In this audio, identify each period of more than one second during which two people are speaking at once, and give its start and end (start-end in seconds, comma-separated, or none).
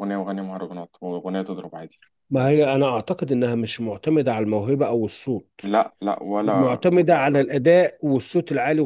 none